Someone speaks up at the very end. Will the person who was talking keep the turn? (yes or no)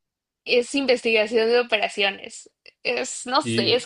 yes